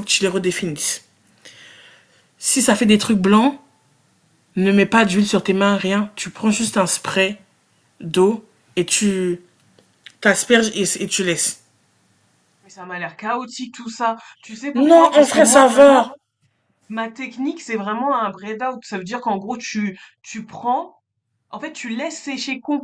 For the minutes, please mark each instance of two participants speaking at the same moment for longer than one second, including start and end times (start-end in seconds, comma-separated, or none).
14.7-16.1